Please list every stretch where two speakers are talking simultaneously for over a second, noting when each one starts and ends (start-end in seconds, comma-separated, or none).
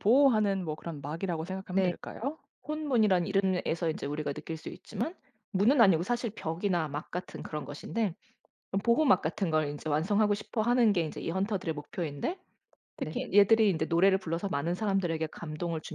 none